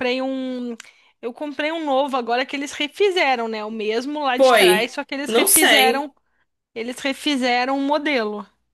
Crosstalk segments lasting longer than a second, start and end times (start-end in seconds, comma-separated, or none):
4.4-6.1